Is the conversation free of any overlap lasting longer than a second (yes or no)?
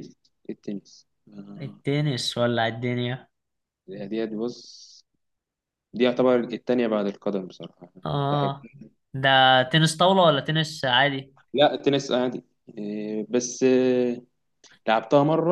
yes